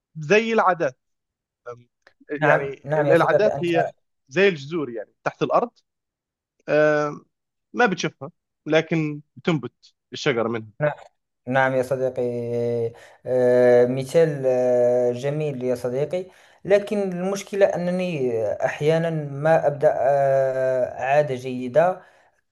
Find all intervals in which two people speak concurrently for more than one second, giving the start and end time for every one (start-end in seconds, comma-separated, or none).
2.4-3.7